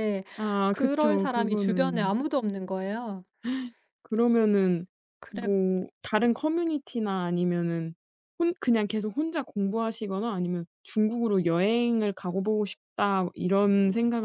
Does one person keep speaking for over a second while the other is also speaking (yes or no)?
yes